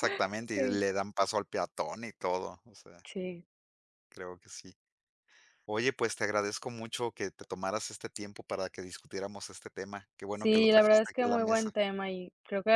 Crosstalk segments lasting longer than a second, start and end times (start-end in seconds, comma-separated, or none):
10.3-11.7